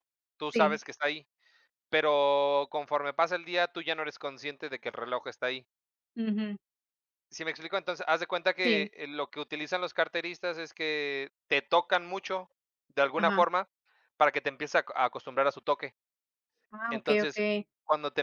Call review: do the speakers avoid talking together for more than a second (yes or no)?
yes